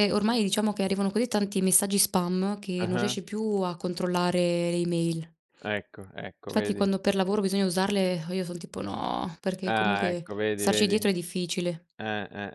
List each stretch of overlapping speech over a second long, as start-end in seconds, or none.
9.6-10.9